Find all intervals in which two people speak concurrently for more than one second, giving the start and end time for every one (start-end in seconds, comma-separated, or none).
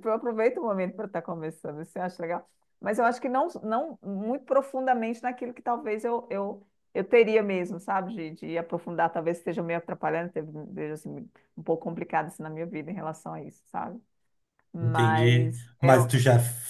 14.8-16.1